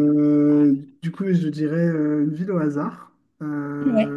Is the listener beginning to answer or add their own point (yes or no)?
no